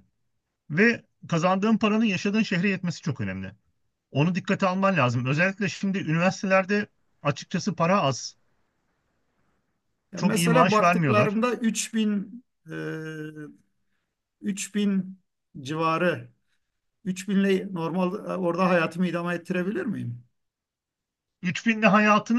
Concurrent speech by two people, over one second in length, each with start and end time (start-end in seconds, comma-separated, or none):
10.1-11.4